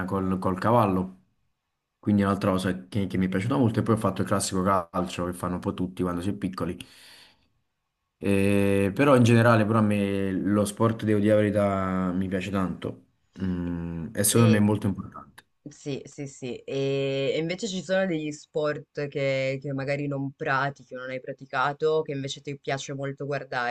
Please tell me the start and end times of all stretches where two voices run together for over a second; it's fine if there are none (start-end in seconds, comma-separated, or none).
none